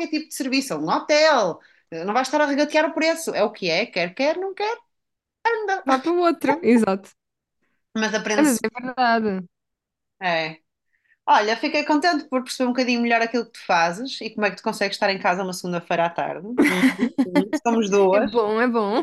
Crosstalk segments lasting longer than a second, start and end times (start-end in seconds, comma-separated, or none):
none